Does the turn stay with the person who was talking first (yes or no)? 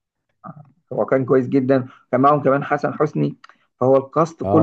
no